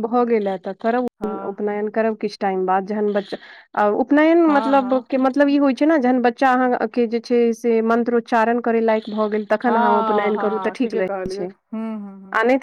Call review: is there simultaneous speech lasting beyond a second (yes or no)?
yes